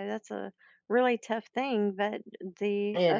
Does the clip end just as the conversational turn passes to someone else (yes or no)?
no